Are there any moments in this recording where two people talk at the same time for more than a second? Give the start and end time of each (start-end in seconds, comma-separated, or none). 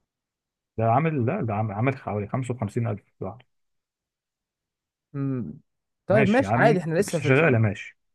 6.1-7.6